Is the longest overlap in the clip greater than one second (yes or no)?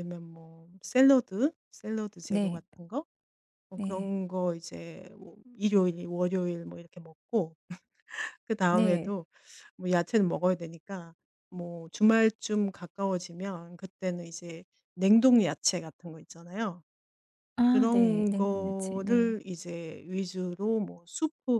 yes